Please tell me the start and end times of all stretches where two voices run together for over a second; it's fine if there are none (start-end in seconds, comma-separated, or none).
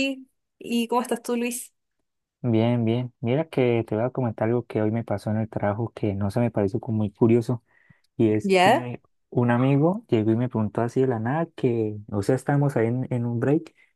none